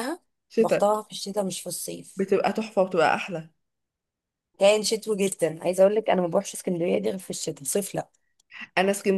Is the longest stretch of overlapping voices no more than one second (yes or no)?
yes